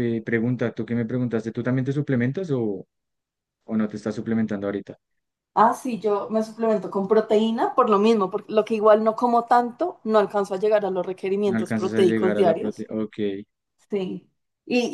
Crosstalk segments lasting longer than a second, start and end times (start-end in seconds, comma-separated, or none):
11.4-12.8